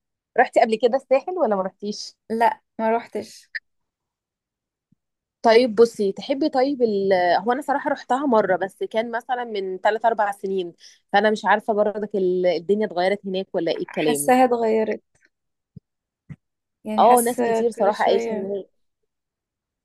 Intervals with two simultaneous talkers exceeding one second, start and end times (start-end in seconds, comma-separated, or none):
17.0-18.5